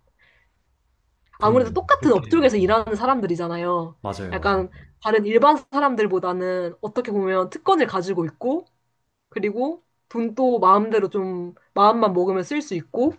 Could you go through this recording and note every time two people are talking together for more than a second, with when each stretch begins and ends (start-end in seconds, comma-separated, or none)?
1.4-2.7